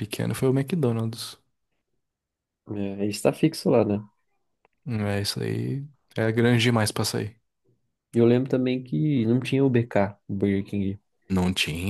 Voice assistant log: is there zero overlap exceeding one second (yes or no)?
yes